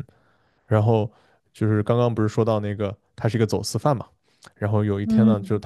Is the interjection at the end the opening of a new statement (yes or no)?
no